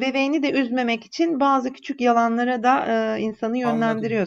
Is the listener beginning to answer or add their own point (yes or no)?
yes